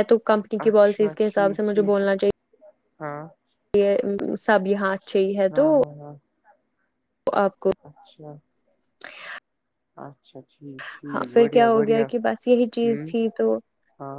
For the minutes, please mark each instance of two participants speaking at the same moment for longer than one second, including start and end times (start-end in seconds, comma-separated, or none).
0.6-2.0